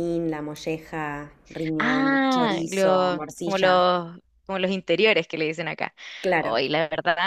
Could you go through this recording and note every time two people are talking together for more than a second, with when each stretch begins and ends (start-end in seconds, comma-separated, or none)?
1.8-3.9